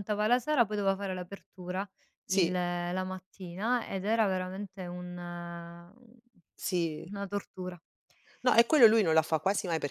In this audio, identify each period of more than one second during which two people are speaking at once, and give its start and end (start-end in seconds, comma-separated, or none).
none